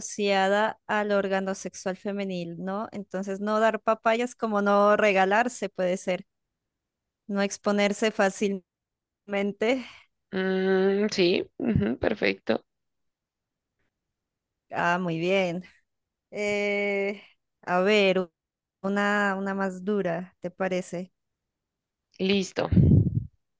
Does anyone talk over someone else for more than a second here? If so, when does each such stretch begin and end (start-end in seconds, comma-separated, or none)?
none